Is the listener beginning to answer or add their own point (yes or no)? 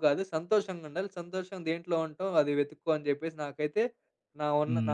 yes